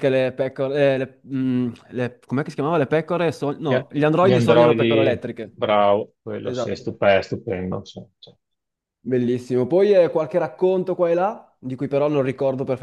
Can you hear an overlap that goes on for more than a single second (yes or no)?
yes